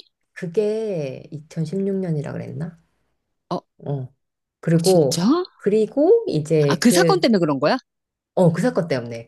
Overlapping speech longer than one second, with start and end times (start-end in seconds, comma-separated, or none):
none